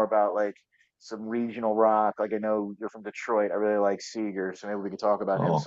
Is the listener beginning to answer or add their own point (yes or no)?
yes